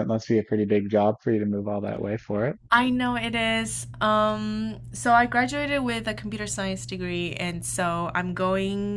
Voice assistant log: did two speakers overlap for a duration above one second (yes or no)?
no